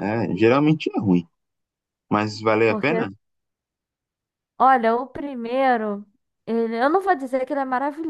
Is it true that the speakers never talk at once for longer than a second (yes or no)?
yes